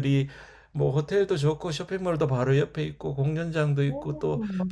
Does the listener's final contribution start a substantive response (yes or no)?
no